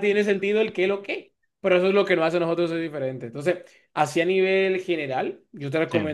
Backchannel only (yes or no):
yes